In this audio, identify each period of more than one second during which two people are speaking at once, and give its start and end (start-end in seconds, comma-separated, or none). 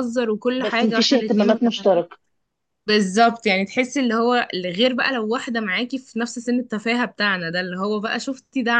0.6-2.0